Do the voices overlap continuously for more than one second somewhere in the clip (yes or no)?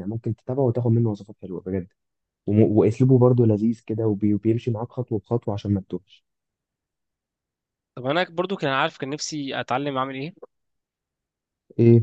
no